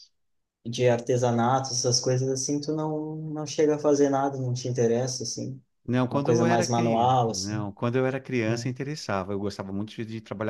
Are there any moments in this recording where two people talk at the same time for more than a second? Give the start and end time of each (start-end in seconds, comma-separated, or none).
6.1-7.7